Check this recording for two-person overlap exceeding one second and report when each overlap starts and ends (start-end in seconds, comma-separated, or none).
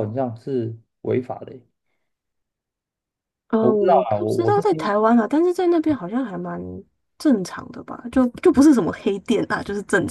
3.6-4.9